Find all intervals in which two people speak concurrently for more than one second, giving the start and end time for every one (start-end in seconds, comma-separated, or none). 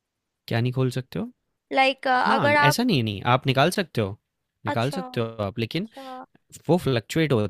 none